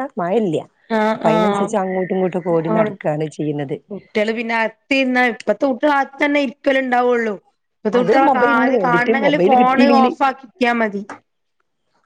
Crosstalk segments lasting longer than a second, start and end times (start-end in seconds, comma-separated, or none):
8.0-10.1